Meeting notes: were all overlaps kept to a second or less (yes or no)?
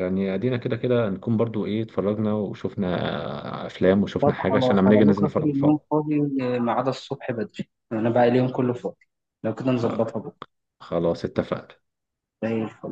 no